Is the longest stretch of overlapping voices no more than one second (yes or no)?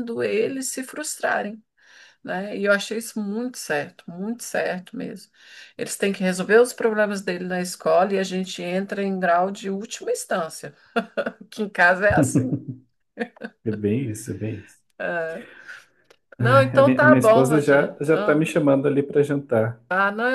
no